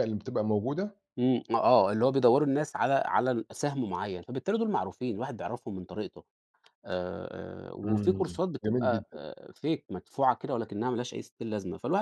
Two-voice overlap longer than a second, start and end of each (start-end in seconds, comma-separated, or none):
7.8-9.2